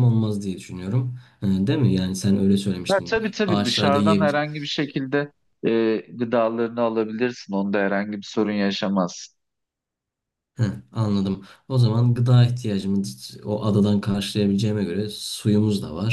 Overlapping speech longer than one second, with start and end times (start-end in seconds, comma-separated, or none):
2.9-4.4